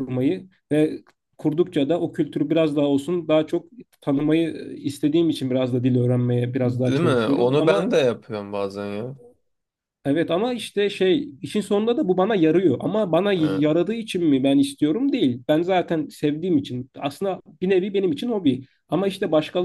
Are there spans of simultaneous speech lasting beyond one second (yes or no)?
yes